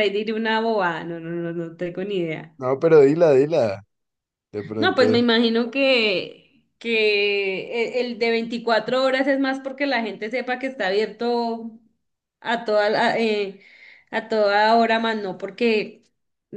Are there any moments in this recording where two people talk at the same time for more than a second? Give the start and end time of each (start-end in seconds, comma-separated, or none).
none